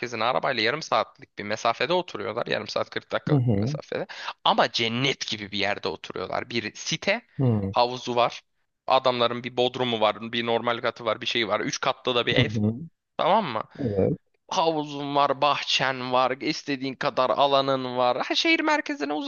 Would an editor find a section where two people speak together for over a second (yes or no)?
no